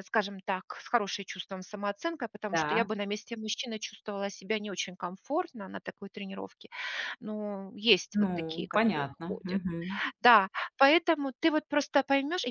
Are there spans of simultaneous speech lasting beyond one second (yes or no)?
yes